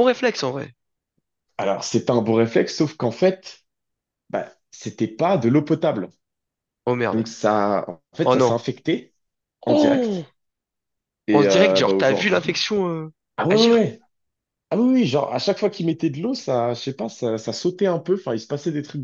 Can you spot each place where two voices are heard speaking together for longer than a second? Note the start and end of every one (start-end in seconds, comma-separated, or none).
11.3-12.6